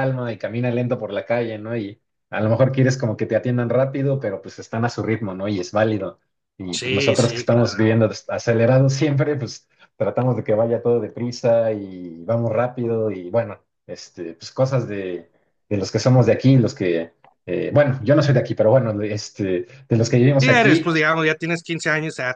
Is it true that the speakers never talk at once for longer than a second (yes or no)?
no